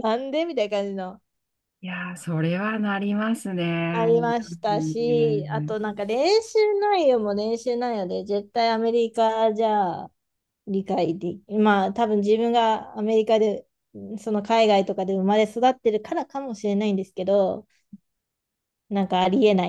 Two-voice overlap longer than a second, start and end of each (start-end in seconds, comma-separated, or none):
3.9-5.8